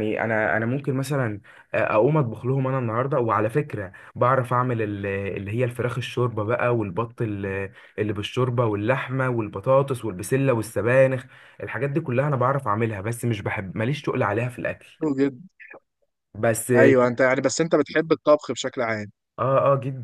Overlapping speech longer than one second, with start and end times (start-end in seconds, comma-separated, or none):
none